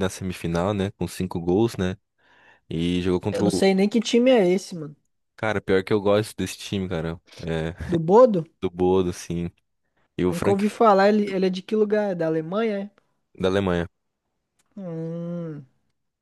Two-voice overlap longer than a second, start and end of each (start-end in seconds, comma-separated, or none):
none